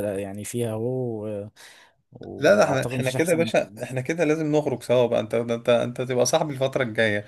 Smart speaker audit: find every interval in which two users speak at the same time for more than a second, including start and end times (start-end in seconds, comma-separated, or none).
2.4-3.8